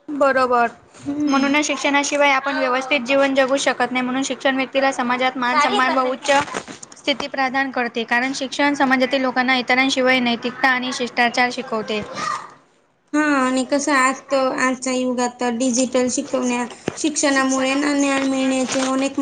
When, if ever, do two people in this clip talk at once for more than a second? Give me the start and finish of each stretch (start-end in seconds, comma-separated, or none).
none